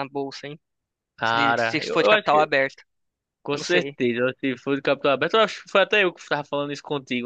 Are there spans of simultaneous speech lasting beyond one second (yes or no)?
yes